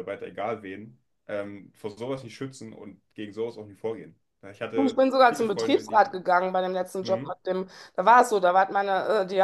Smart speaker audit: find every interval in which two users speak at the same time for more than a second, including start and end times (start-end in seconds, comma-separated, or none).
4.7-6.2